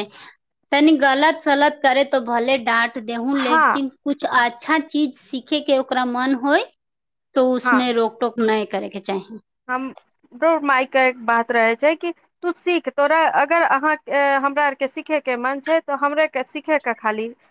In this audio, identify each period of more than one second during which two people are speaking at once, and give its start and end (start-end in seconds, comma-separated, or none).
none